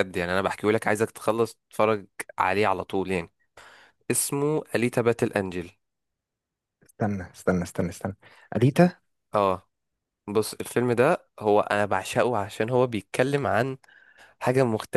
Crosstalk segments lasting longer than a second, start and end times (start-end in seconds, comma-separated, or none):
none